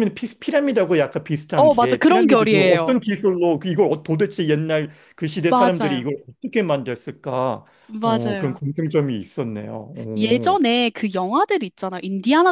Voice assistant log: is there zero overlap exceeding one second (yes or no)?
no